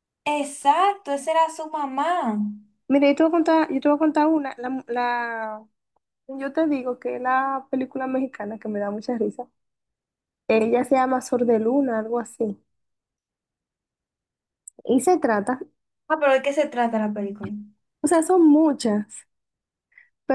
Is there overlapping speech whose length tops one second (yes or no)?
no